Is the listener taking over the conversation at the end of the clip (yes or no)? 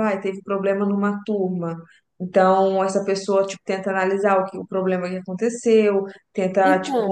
no